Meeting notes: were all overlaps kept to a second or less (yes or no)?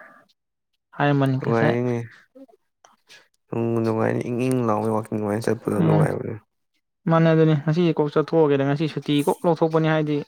yes